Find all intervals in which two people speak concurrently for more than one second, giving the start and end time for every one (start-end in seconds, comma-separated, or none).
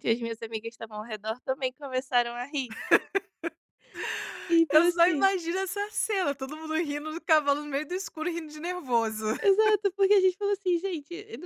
none